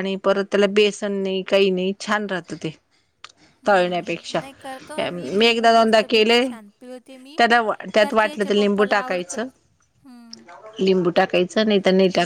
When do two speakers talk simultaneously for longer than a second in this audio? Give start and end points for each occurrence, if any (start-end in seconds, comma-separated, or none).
8.0-9.3